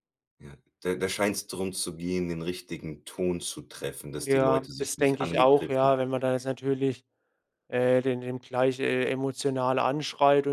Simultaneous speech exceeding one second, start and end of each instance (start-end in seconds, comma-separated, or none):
4.2-5.9